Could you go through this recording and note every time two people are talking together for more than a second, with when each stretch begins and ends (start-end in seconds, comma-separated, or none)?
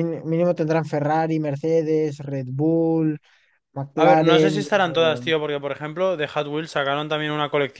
4.0-5.2